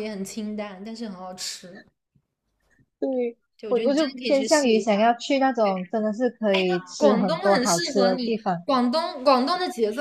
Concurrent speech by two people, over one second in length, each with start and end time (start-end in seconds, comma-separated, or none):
3.5-5.1, 7.0-8.7